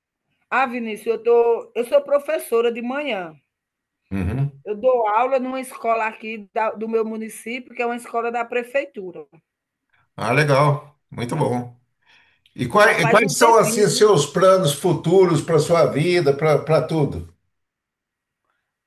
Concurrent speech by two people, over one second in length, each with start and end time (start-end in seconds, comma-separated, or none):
12.8-14.0